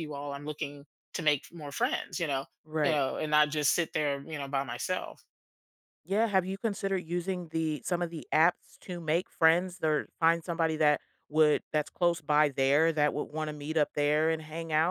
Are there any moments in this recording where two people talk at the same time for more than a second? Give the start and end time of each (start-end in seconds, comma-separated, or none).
none